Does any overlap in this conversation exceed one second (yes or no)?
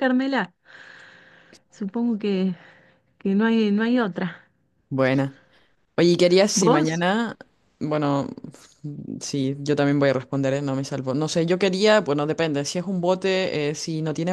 no